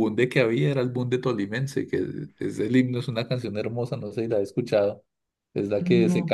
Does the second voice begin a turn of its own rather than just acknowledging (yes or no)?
no